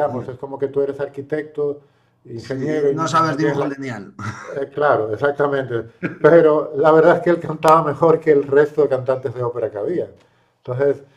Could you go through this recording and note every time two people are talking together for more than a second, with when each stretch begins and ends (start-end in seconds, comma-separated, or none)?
2.3-3.7